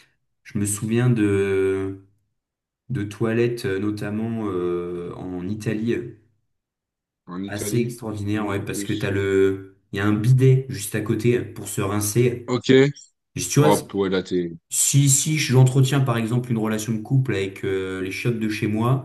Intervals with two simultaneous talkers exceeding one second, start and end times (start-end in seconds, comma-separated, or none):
7.5-9.1